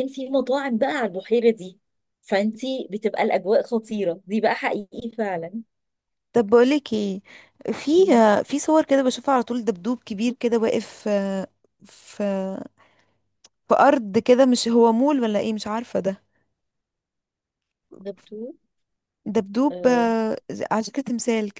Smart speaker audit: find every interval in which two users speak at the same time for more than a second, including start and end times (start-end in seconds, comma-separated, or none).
none